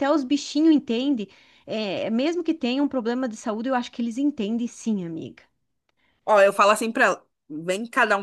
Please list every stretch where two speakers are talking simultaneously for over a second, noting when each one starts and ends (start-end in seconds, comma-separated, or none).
none